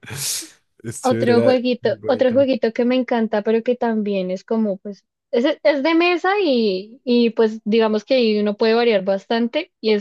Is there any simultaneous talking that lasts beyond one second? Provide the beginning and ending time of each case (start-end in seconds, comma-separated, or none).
1.0-2.5